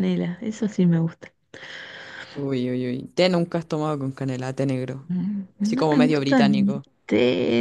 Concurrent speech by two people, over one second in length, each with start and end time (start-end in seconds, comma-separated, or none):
5.6-6.8